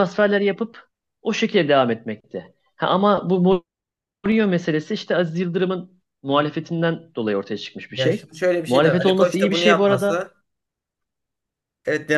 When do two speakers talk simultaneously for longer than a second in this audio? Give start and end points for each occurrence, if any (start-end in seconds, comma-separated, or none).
7.9-10.2